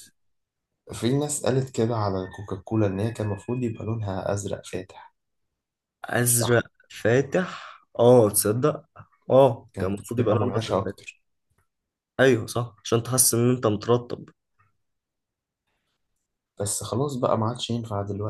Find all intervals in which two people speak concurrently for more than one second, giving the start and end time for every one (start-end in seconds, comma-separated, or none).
9.7-11.0